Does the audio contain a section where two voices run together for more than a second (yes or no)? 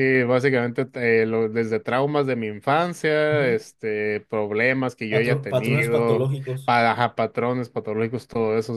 yes